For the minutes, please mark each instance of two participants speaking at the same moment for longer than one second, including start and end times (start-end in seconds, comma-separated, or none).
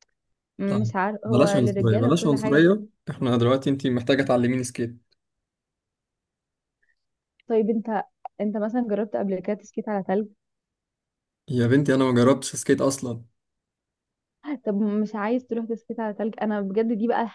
0.7-2.6